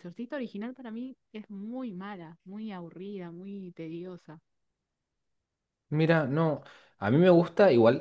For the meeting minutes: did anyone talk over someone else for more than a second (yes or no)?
no